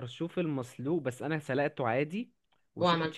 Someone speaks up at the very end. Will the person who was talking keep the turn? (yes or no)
yes